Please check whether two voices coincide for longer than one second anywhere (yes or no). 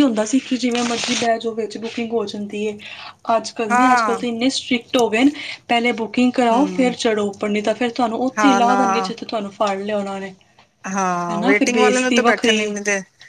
yes